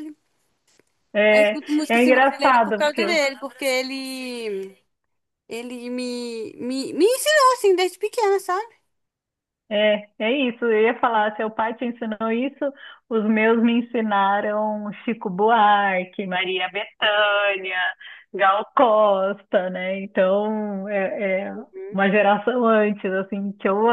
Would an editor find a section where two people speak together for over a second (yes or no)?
yes